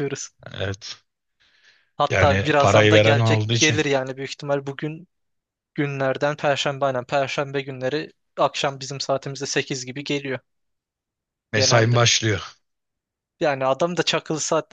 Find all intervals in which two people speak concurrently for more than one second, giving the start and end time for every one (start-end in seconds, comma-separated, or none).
2.1-3.8